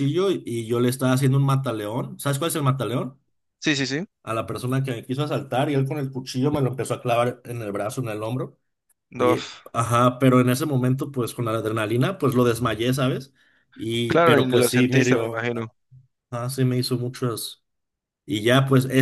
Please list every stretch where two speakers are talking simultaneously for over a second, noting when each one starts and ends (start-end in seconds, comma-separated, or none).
14.1-15.5